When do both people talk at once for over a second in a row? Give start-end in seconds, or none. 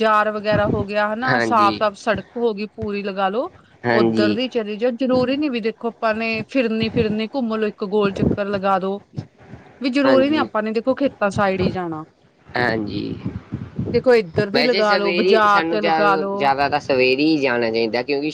14.5-16.3